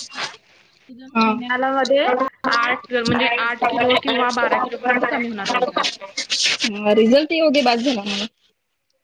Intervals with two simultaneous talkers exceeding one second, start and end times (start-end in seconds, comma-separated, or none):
none